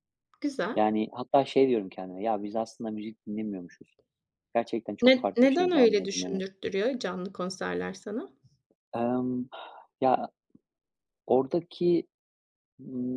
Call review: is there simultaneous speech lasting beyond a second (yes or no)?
yes